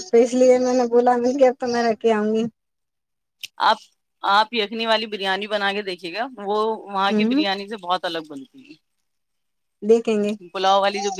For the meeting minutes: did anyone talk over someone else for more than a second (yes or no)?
no